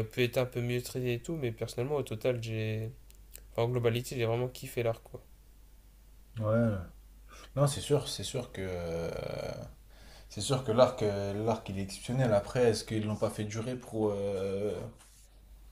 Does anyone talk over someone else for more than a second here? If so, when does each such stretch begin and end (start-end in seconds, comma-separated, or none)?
none